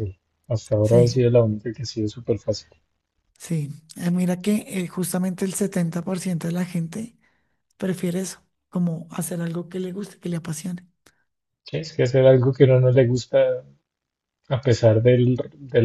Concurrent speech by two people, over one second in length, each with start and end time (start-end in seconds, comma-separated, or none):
none